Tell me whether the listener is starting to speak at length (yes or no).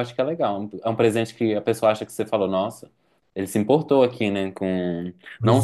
no